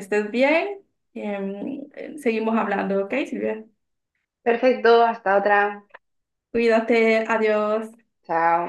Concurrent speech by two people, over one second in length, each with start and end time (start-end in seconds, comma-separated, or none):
none